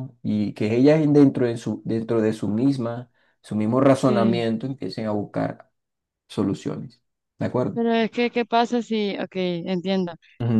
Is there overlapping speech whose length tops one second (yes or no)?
no